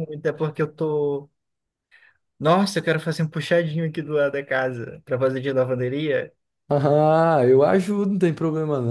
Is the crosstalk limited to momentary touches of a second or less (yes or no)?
yes